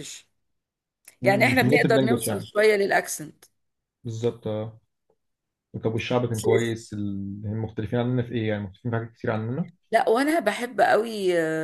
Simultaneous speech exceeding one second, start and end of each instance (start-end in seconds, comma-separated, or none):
1.2-2.5